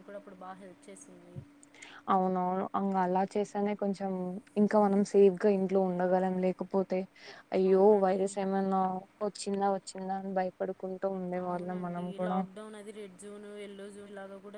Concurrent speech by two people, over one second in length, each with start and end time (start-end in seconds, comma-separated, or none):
none